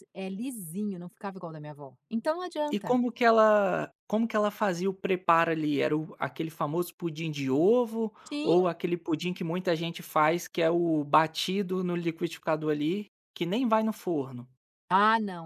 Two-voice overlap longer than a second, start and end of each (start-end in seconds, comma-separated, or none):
none